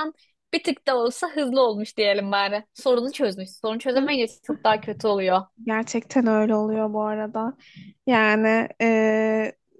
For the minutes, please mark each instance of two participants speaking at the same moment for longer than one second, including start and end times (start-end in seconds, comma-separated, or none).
none